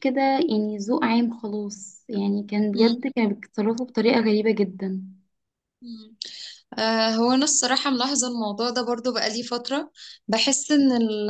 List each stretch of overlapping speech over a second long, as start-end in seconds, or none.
none